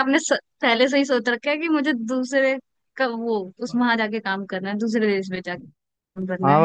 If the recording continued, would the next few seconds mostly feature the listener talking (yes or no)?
yes